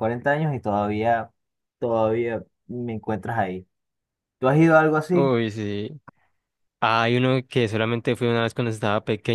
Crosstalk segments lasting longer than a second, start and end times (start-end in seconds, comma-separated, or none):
none